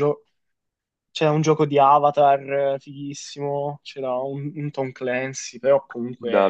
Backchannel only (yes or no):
no